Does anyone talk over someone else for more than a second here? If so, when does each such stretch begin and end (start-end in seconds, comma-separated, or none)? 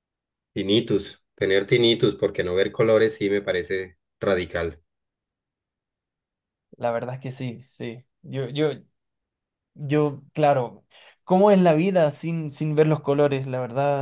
none